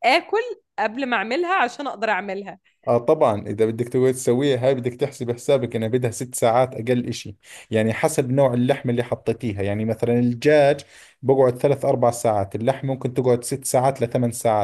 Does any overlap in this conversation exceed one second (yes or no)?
no